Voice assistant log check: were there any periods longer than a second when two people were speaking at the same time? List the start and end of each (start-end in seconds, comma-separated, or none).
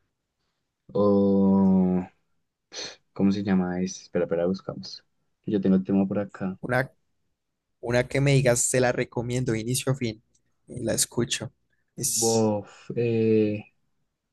none